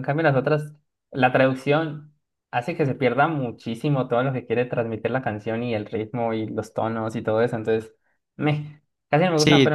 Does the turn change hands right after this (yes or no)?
no